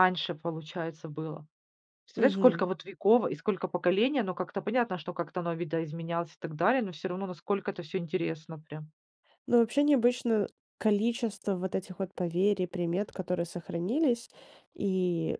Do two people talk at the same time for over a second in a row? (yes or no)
no